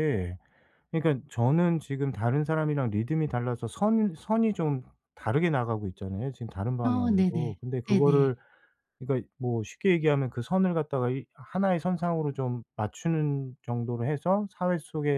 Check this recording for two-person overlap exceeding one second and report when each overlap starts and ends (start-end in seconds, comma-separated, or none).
6.8-8.3